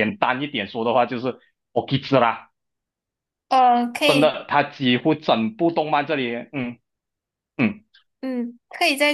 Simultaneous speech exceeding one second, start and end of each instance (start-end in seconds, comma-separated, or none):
none